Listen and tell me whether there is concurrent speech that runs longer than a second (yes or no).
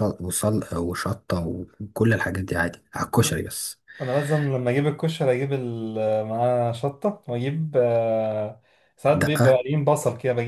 no